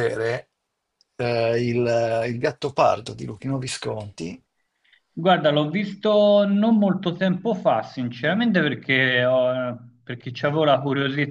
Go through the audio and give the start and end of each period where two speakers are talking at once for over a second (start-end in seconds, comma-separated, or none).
none